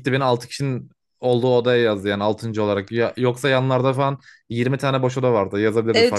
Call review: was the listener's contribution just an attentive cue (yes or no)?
no